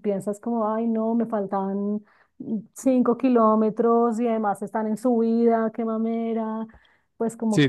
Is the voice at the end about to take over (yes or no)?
yes